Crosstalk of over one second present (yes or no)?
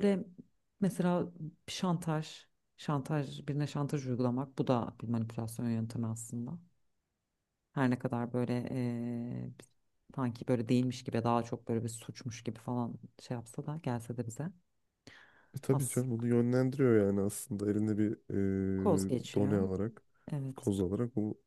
no